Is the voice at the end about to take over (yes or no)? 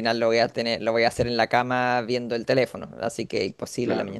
yes